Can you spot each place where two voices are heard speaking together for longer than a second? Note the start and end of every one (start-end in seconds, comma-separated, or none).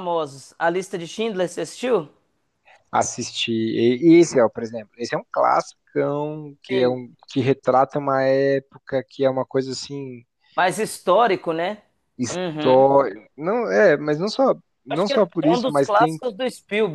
14.9-16.2